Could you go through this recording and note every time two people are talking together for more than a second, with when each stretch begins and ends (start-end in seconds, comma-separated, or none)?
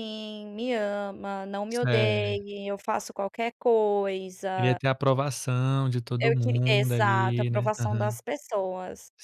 6.2-8.2